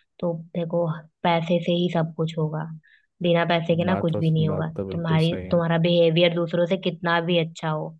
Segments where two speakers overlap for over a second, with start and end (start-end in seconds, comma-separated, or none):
3.9-5.6